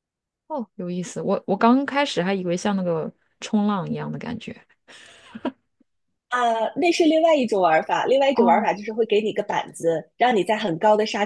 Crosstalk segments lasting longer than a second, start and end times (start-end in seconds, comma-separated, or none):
none